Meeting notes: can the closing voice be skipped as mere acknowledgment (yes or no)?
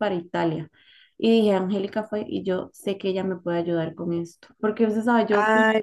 yes